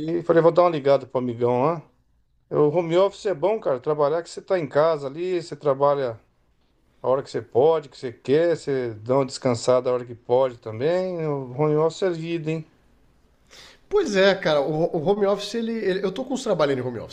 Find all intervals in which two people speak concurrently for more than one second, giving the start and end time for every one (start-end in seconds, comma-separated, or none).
none